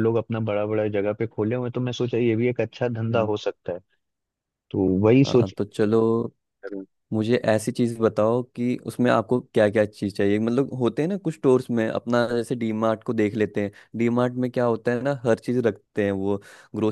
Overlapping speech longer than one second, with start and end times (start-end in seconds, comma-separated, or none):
none